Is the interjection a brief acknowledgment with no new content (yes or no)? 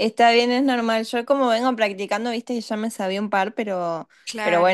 yes